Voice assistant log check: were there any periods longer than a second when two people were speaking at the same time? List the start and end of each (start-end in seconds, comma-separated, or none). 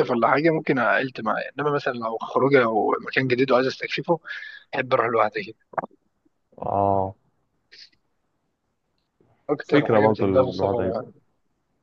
9.6-11.0